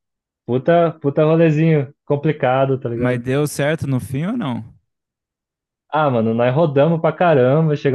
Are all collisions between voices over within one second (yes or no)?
yes